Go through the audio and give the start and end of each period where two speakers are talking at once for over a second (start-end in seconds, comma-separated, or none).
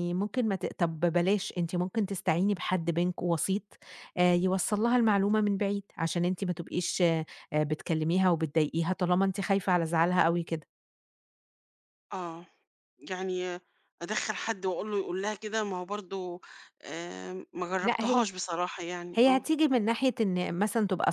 none